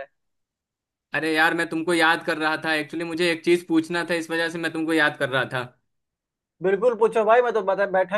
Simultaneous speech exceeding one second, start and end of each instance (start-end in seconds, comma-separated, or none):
none